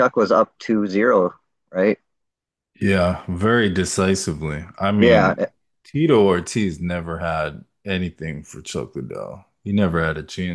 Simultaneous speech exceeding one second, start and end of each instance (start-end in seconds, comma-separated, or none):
none